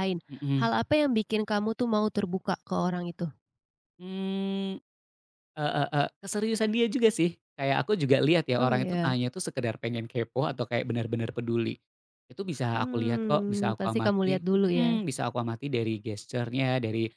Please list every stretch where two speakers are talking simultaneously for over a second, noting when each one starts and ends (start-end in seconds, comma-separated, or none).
12.8-14.9